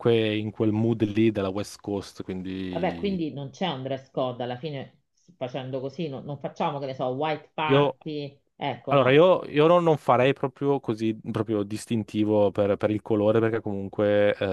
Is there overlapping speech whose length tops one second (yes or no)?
no